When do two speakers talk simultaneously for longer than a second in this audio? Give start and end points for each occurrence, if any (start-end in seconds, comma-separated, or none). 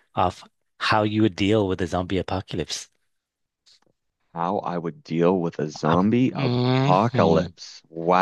5.8-7.5